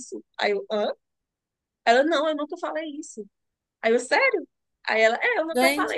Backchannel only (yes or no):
no